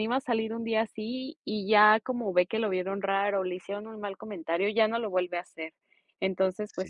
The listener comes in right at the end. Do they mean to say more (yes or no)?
no